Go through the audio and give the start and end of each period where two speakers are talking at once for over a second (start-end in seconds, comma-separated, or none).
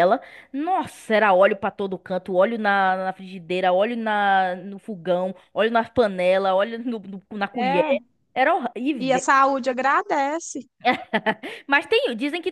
none